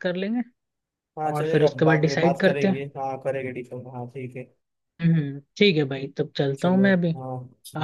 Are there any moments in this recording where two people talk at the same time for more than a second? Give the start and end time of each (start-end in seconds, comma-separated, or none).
1.3-2.9